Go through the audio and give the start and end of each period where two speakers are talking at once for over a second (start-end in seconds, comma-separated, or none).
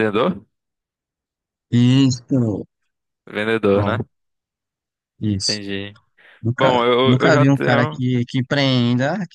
6.6-8.0